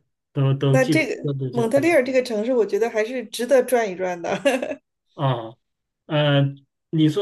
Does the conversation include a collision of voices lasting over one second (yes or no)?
yes